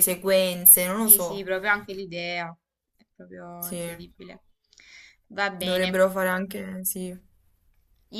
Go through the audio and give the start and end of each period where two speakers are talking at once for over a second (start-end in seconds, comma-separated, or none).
none